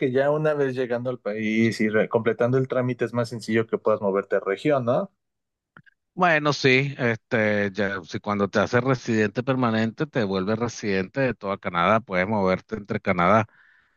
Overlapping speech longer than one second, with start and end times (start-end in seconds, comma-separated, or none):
none